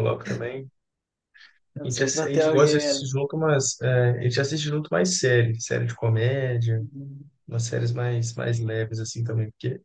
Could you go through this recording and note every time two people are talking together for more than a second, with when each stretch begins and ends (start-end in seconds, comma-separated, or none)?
1.8-3.1